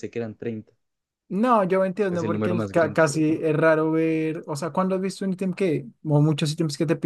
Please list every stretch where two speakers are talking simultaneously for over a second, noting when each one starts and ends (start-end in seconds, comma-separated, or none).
2.1-3.4